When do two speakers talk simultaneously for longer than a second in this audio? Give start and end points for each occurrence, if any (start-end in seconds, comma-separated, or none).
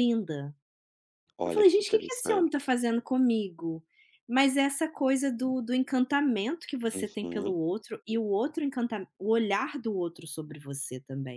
1.4-2.7